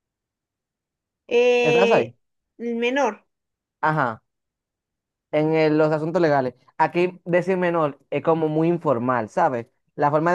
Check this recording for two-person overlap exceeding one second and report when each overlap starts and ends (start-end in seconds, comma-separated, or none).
none